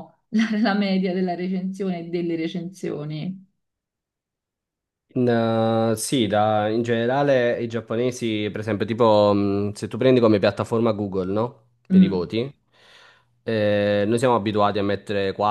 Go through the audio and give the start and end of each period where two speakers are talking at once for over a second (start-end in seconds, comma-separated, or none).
none